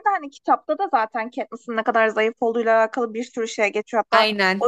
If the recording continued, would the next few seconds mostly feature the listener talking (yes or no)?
no